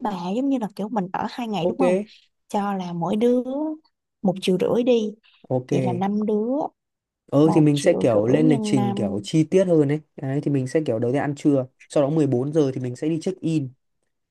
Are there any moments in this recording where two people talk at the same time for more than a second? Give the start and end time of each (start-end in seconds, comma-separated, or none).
7.4-9.2